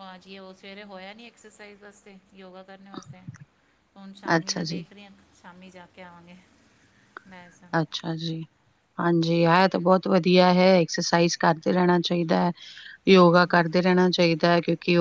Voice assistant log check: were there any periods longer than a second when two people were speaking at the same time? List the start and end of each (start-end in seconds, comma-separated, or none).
none